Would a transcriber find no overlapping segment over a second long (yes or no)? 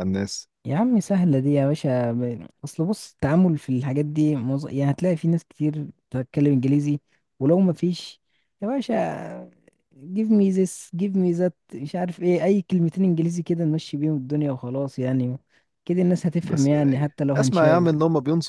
no